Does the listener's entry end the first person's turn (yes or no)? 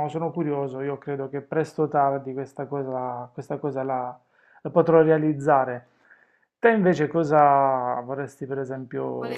yes